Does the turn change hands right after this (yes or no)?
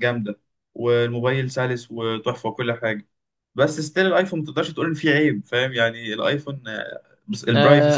yes